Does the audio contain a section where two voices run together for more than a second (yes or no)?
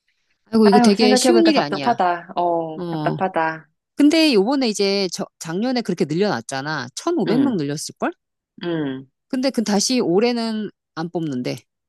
yes